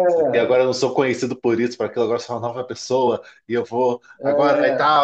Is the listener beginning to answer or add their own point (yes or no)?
no